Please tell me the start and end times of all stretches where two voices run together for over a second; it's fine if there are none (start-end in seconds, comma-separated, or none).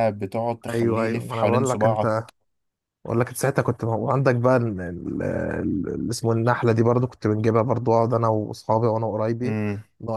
0.7-2.3